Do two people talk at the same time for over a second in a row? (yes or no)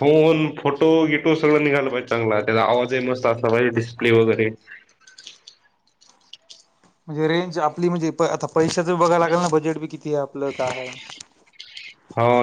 no